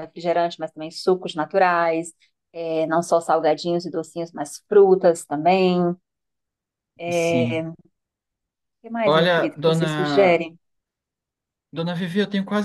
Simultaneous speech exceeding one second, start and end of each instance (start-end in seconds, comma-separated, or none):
9.1-10.4